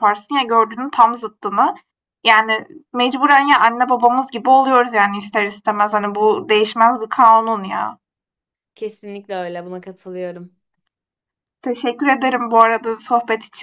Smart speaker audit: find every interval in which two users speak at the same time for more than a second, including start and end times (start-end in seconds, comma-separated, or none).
none